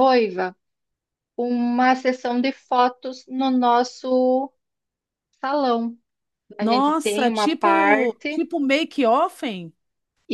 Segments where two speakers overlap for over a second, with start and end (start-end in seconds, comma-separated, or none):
6.6-8.5